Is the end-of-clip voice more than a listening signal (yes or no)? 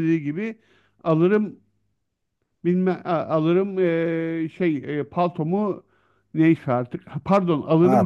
no